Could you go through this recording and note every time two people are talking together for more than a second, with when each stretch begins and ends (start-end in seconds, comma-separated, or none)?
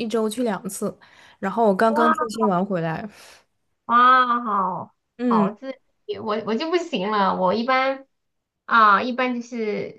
none